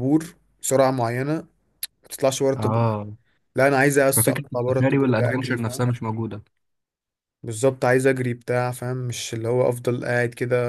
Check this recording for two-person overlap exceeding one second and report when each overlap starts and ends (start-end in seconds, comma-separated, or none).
4.1-5.9